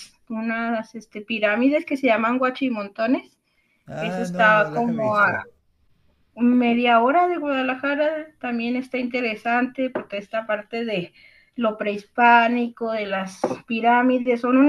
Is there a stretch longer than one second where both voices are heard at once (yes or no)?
yes